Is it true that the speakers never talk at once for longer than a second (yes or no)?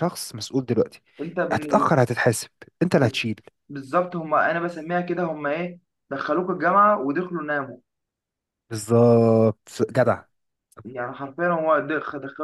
yes